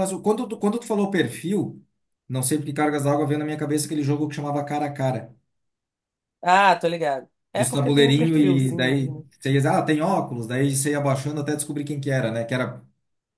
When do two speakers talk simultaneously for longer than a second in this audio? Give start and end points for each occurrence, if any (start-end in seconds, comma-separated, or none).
7.5-9.2